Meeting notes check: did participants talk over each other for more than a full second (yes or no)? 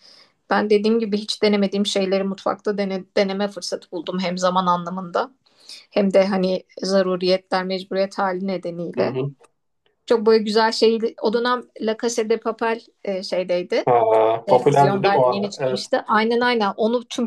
yes